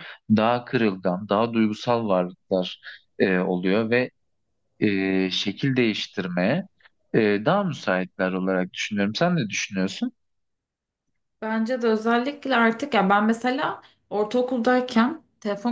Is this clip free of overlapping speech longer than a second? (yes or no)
yes